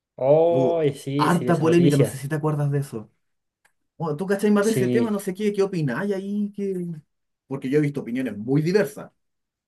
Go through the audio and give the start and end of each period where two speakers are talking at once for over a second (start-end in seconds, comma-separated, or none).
0.5-2.2